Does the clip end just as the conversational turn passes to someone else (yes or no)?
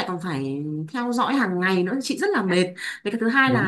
no